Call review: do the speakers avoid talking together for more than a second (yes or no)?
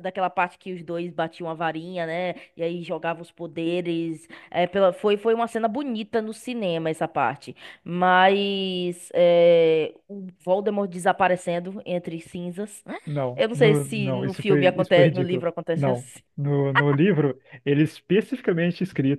no